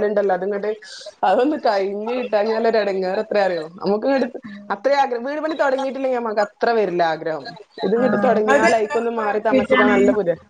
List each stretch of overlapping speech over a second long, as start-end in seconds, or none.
8.0-9.9